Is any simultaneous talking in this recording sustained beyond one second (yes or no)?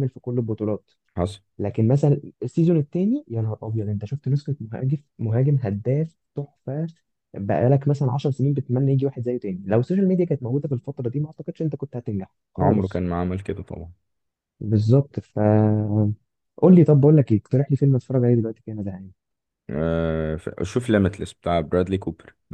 no